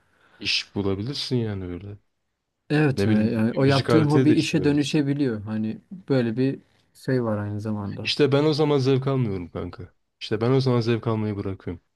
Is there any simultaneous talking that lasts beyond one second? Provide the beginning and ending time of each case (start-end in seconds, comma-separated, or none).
3.0-5.1